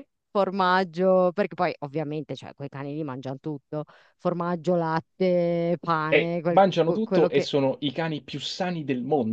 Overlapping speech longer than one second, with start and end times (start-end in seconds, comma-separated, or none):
6.1-7.5